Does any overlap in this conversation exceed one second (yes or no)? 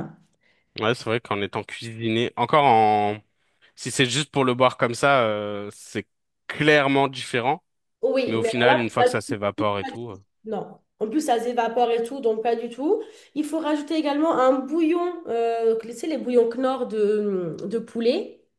yes